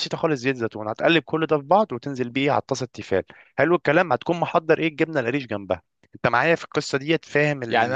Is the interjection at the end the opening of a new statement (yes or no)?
yes